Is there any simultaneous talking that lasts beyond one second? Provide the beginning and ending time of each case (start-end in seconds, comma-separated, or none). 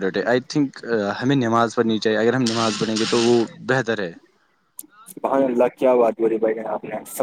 none